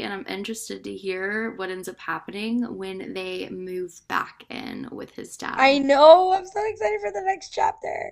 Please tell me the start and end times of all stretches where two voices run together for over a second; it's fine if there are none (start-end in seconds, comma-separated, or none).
none